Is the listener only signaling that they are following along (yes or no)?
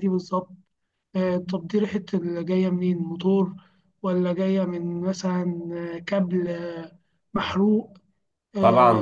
no